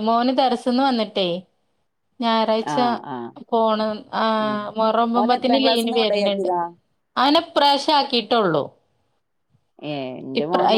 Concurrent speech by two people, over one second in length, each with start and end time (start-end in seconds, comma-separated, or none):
5.2-6.5